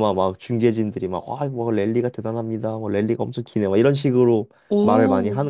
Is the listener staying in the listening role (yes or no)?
no